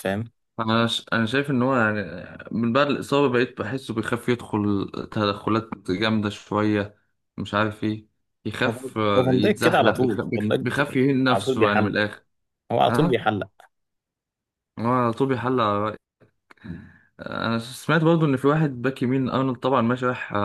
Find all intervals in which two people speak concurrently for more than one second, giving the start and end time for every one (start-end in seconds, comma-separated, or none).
8.7-12.0